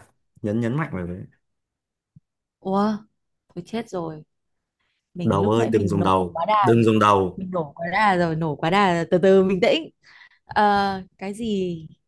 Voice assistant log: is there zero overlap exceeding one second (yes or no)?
no